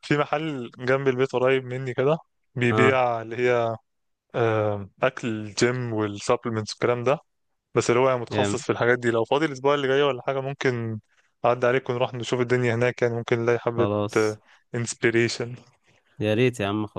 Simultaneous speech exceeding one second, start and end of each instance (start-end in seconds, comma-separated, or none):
none